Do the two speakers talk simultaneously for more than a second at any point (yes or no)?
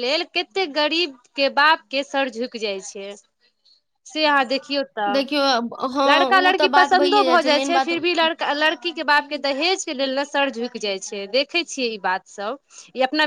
yes